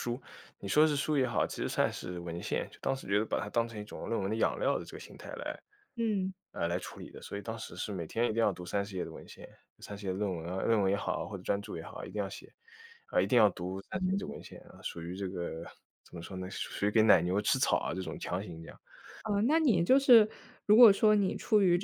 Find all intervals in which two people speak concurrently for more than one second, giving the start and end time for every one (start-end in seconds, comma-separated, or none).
none